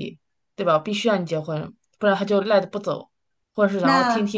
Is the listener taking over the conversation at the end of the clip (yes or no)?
no